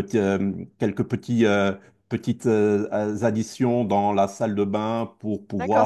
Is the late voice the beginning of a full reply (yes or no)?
yes